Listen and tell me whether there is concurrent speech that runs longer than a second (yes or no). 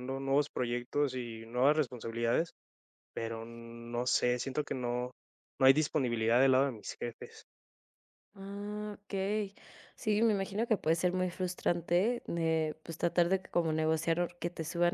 no